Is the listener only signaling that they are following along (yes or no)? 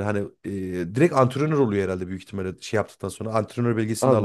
no